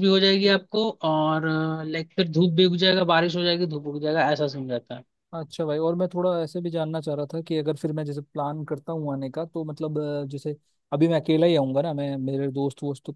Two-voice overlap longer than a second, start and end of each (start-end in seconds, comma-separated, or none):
none